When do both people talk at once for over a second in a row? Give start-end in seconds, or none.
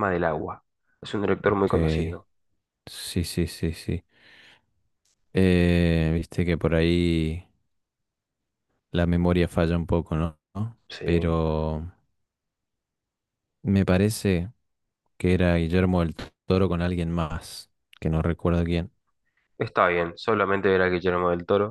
none